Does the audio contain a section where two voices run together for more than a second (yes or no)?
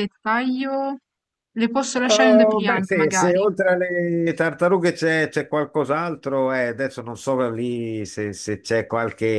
yes